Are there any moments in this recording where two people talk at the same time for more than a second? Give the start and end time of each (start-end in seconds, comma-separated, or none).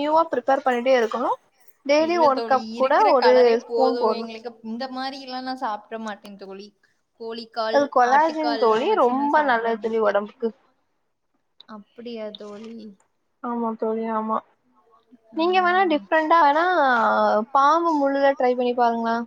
7.8-10.2